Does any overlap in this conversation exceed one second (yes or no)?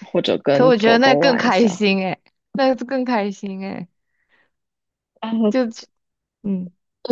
yes